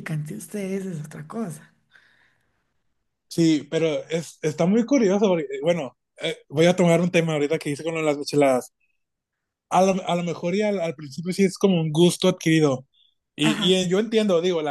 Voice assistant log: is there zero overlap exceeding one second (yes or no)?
yes